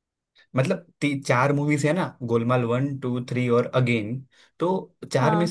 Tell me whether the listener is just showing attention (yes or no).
yes